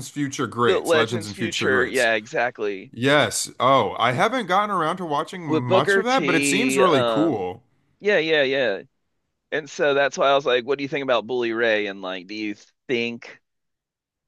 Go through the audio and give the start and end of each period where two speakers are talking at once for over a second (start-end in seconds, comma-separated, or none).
0.7-2.1, 5.5-7.5